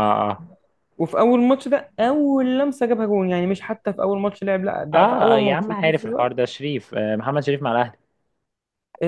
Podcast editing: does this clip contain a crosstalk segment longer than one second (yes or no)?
yes